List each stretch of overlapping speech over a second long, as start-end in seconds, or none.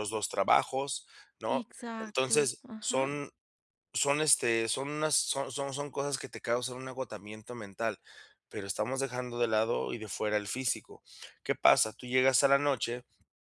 1.5-3.1